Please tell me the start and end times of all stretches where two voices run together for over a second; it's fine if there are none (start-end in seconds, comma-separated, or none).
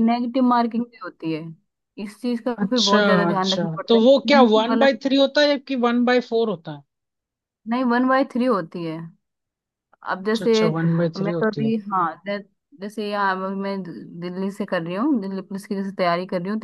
2.6-5.0